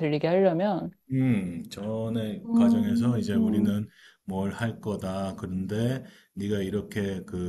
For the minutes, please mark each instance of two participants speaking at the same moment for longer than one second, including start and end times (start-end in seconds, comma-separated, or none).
2.5-3.8